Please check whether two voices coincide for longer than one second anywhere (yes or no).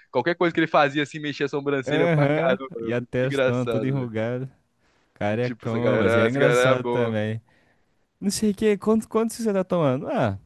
yes